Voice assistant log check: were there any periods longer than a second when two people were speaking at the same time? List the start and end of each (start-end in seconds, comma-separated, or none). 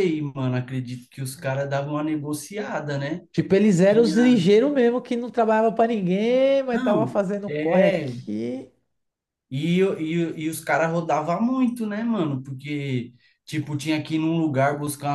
6.7-8.1